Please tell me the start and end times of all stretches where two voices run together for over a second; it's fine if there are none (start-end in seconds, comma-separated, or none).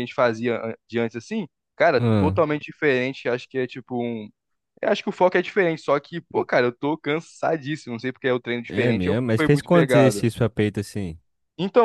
8.7-10.3